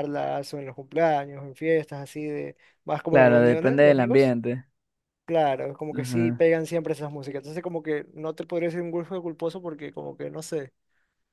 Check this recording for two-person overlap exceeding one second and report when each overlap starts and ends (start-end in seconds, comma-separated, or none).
3.1-4.3